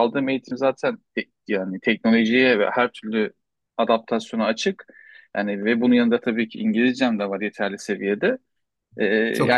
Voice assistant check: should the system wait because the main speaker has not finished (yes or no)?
yes